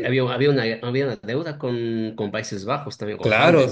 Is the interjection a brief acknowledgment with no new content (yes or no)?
no